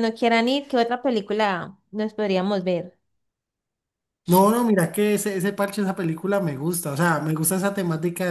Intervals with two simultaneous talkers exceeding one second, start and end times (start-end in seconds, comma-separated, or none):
none